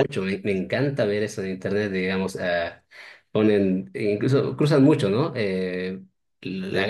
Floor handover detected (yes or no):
no